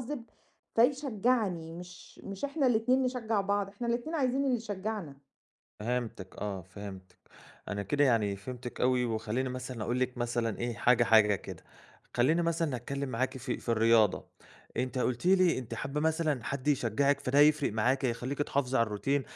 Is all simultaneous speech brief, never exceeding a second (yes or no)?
yes